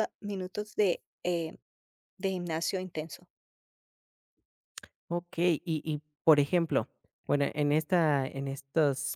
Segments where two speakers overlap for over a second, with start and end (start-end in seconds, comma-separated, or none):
none